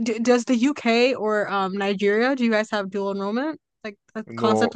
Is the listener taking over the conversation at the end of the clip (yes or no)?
yes